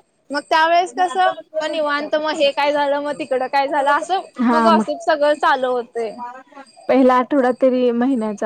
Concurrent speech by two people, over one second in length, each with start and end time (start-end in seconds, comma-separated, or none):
none